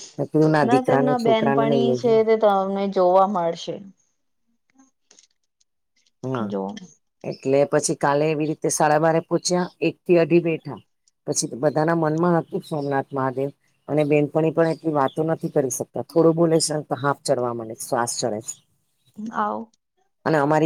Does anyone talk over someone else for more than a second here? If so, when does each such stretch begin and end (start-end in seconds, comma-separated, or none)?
0.7-2.1